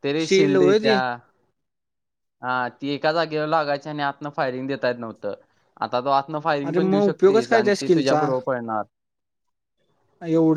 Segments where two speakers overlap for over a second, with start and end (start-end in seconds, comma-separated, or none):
6.7-8.3